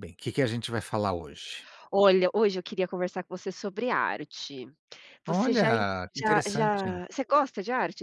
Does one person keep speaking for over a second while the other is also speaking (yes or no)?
yes